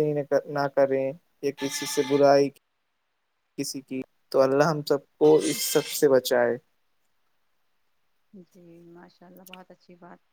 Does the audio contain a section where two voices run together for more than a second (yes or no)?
no